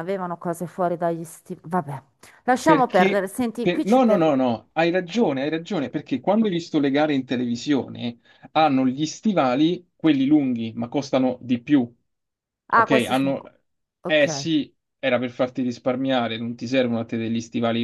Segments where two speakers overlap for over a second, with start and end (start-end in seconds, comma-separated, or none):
2.6-4.4